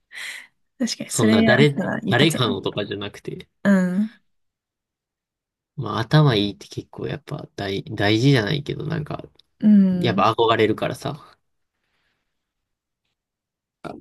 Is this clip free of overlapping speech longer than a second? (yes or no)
no